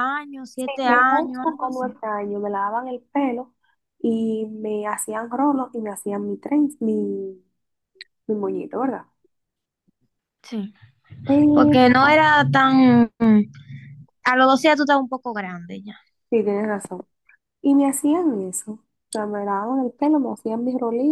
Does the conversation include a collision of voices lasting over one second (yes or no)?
yes